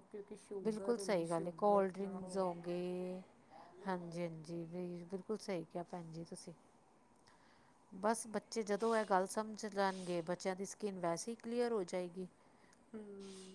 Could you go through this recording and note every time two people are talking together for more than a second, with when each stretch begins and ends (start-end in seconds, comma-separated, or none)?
0.6-2.6